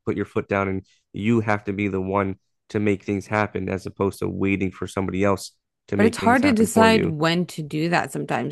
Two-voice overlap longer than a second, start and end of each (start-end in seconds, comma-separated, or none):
6.0-7.2